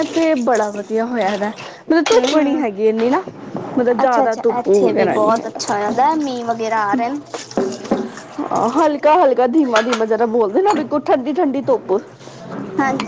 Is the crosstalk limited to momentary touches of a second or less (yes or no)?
no